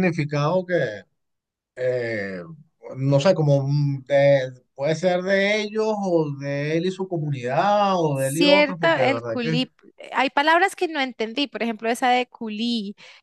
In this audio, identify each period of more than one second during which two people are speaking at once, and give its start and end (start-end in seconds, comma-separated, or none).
8.1-9.6